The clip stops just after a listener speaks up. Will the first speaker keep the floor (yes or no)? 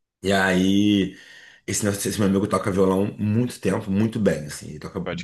yes